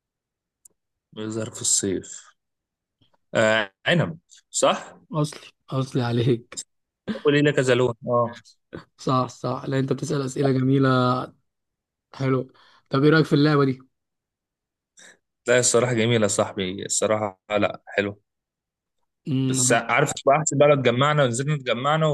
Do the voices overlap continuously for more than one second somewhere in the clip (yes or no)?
no